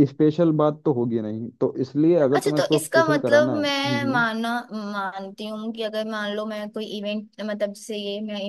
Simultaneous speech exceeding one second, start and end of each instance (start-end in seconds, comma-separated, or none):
2.4-4.3